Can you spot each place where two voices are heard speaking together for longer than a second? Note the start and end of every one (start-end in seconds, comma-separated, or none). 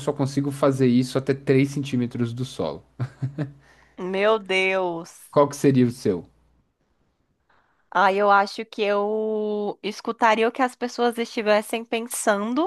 none